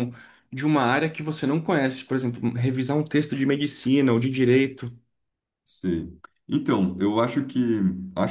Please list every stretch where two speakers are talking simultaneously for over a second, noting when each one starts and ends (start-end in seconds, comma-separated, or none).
none